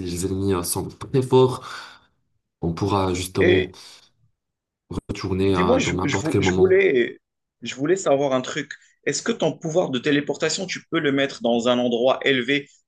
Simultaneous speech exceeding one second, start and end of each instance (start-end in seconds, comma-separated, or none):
5.4-6.8